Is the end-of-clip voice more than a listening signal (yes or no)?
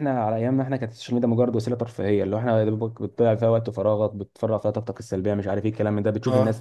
no